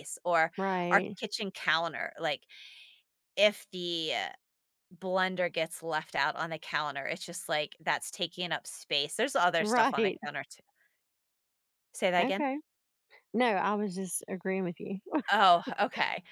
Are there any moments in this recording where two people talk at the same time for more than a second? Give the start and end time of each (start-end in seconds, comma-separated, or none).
none